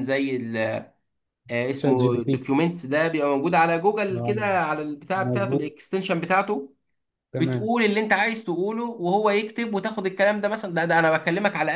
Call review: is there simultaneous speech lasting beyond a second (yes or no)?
no